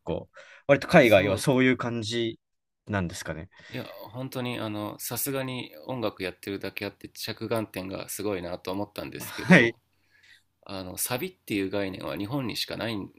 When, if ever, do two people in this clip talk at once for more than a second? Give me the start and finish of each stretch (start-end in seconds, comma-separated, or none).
none